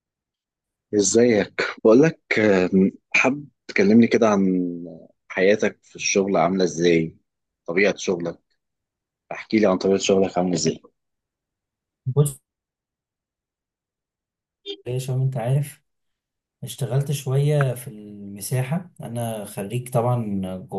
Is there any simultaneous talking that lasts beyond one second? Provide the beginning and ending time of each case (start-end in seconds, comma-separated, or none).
none